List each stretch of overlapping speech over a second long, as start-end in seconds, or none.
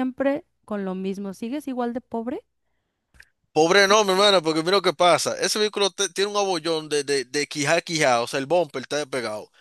none